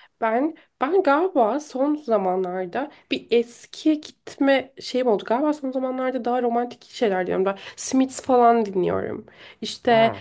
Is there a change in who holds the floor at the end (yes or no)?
no